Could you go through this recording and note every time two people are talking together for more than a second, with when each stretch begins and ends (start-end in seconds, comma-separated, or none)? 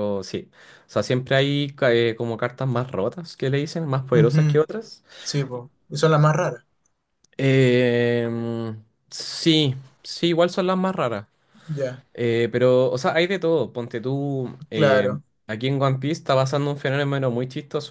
none